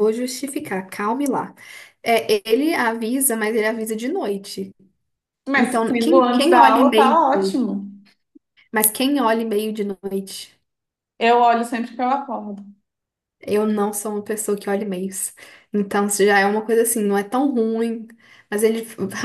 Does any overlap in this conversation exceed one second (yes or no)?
yes